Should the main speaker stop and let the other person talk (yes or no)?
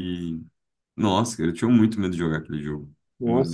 yes